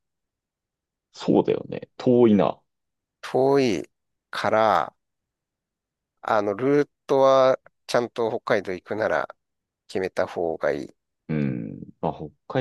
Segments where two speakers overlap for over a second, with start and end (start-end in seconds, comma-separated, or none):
none